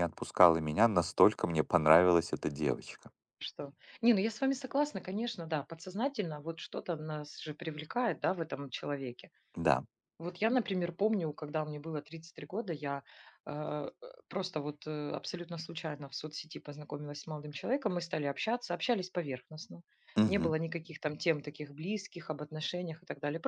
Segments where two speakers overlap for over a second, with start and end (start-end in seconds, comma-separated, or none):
none